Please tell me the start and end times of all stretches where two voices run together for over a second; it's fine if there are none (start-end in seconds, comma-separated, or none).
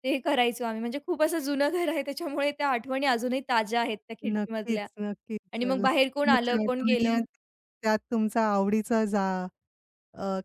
5.5-7.2